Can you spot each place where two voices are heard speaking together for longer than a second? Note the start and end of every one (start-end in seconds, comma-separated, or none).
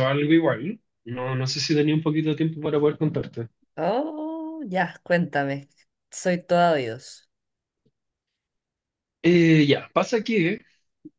none